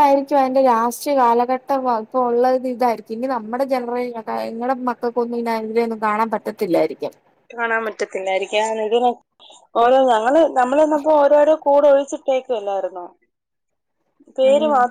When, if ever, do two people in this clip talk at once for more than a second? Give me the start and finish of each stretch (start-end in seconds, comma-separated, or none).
none